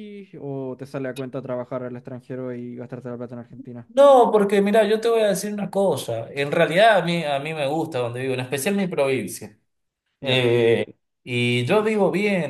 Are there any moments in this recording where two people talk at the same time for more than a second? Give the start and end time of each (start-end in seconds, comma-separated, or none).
none